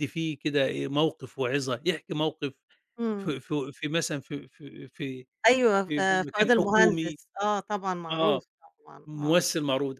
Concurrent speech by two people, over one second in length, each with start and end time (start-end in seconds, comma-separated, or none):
5.8-7.2